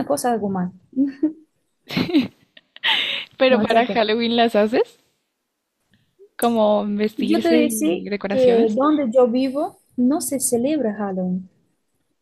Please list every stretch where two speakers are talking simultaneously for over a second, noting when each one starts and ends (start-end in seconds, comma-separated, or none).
7.2-8.8